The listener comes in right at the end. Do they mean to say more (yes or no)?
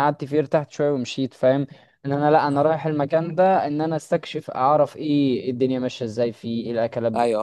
yes